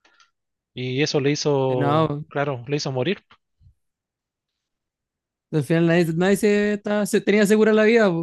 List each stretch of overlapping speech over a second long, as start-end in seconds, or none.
none